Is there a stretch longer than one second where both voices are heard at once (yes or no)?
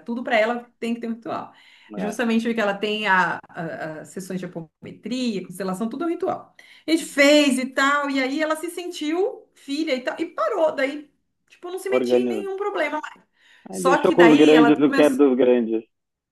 yes